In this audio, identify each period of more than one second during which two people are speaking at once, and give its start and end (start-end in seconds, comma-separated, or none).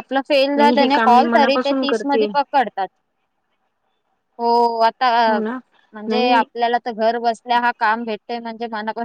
0.6-2.3